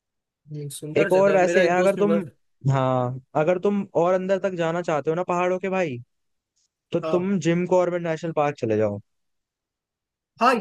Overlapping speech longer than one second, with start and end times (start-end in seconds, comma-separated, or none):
1.0-2.2